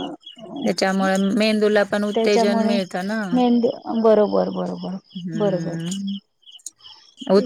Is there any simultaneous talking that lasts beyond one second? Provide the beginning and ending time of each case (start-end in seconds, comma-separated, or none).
none